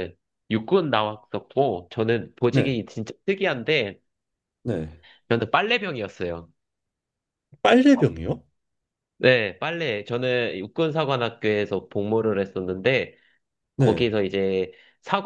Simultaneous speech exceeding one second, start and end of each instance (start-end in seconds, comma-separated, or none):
none